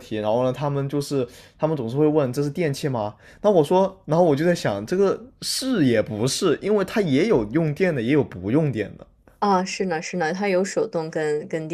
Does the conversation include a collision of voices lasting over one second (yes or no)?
no